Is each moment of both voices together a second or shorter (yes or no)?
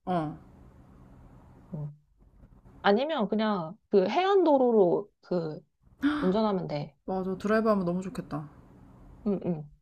yes